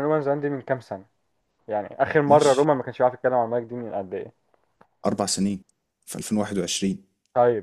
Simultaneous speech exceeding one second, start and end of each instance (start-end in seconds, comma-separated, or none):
none